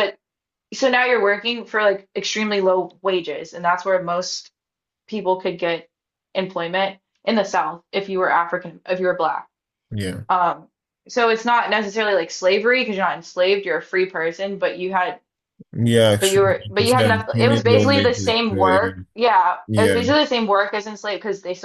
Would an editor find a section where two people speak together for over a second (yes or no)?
yes